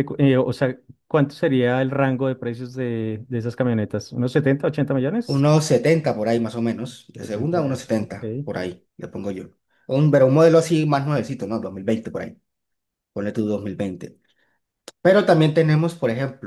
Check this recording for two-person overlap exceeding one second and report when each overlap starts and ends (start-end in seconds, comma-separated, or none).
7.2-8.5